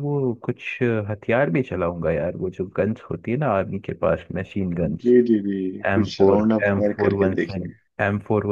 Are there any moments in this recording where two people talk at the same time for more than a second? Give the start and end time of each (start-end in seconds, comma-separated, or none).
5.9-7.9